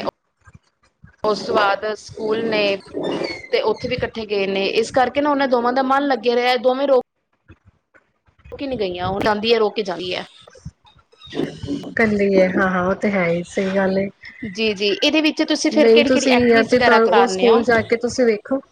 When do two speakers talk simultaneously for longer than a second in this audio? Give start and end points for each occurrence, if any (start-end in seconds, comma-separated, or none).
15.7-17.6